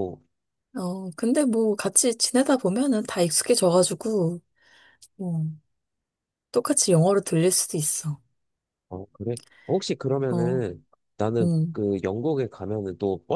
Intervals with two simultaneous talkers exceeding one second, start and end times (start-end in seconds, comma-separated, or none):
none